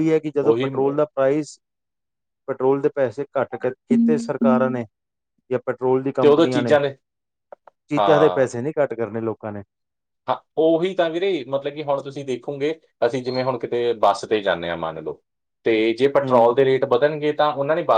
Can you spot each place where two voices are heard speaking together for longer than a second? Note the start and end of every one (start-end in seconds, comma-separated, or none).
none